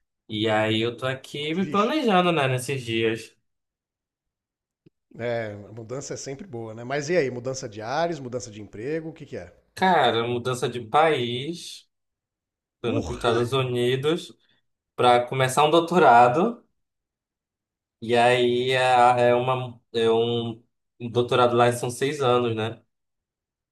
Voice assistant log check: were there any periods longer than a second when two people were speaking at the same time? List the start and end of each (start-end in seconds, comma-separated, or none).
none